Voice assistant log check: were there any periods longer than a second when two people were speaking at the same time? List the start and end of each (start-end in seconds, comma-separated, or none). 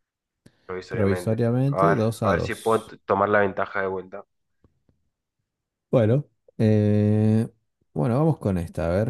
0.9-2.9